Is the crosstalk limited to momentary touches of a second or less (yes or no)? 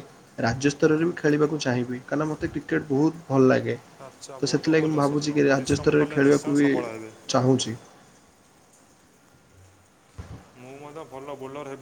no